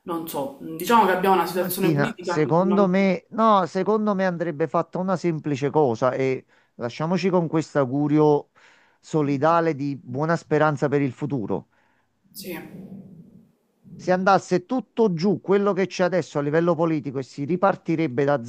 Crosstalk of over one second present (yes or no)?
yes